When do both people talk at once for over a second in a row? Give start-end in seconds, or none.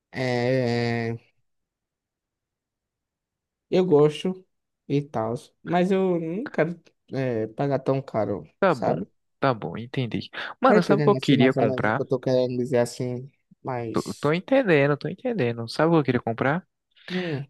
10.7-12.0